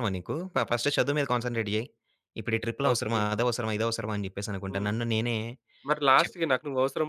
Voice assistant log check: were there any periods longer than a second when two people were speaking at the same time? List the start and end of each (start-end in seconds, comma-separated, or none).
none